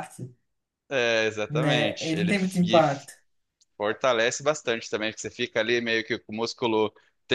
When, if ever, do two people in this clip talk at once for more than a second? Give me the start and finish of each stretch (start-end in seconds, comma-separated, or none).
1.5-2.8